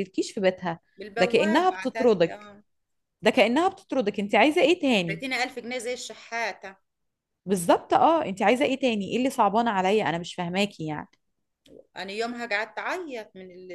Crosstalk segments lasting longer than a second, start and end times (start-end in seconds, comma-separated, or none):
1.2-2.5